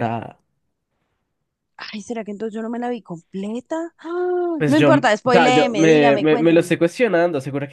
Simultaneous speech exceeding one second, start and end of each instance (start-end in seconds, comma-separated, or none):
4.6-6.7